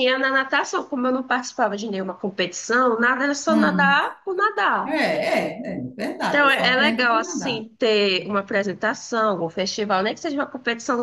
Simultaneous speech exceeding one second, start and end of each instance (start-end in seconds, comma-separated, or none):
6.3-7.7